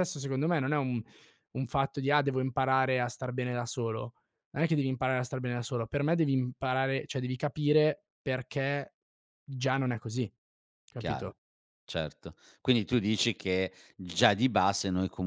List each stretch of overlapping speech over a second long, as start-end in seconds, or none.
none